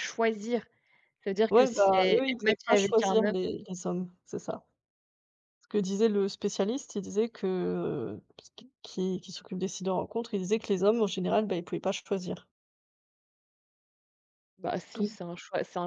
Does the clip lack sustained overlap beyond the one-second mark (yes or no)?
no